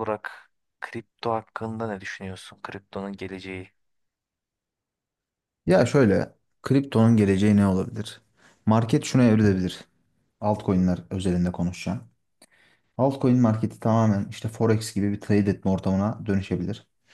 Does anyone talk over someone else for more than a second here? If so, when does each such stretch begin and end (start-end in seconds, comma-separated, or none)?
none